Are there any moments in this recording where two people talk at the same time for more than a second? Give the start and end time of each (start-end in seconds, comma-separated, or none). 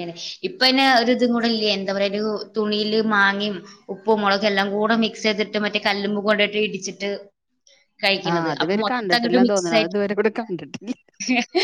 8.3-9.9